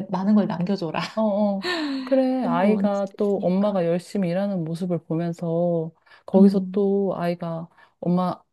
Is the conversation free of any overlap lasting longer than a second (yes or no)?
no